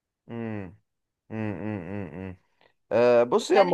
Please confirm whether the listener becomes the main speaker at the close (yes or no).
no